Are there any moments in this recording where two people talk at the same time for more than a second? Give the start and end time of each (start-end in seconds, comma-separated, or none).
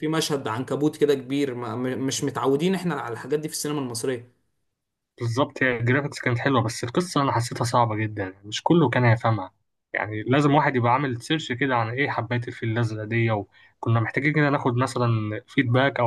none